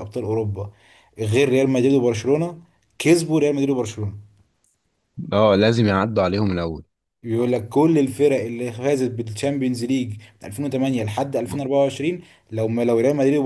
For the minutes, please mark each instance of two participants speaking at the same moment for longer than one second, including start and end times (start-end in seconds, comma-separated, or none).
none